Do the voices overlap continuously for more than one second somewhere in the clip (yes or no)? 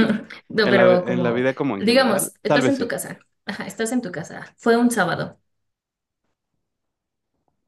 yes